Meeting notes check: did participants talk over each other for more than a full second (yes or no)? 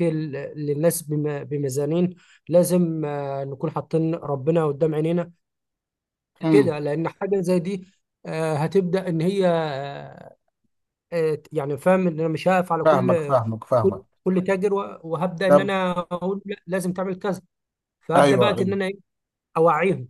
no